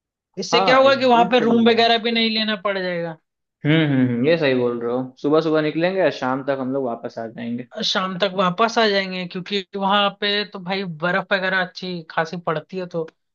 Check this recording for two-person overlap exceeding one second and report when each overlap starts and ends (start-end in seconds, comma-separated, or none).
0.5-1.7